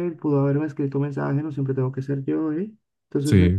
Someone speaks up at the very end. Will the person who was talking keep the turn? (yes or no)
yes